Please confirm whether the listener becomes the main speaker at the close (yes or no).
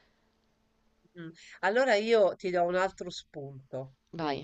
no